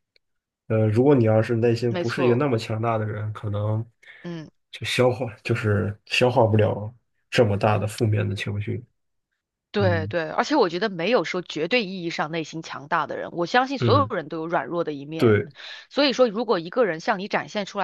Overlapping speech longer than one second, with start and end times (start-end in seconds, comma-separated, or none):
none